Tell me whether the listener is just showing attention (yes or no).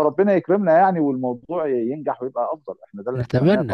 no